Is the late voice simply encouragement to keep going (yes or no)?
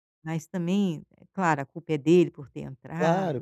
no